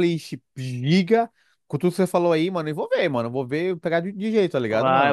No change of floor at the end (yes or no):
no